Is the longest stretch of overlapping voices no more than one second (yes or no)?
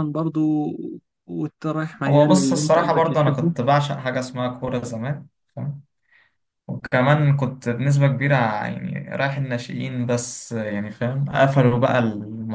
no